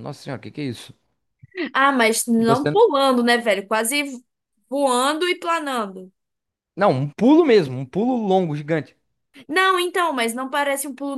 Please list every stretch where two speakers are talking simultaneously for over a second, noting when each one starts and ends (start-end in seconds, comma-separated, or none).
none